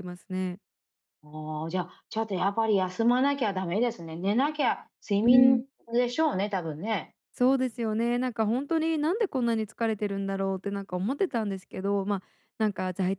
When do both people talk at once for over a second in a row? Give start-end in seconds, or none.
none